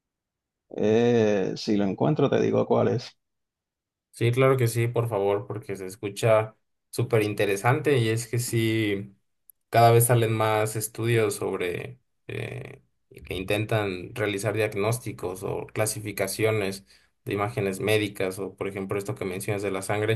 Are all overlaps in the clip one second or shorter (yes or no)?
yes